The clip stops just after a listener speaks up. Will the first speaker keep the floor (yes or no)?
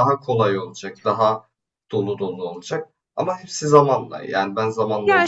no